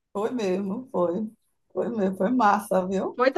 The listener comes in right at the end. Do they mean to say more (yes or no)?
yes